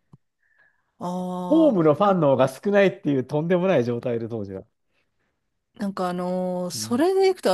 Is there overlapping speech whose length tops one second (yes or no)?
no